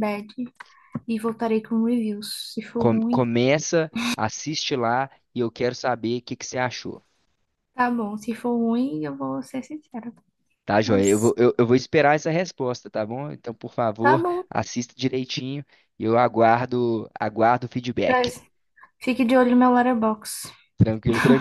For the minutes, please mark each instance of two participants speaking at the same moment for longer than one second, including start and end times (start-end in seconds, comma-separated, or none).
none